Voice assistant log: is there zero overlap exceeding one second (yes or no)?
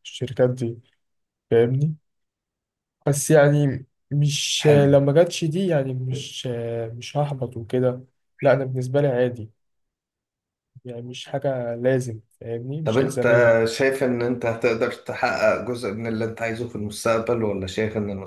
yes